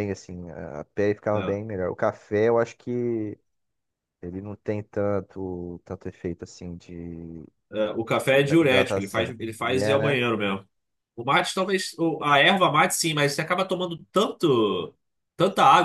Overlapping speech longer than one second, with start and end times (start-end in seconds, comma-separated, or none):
8.3-10.2